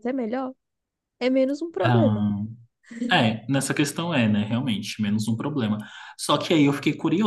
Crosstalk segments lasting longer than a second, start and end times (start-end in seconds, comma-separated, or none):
none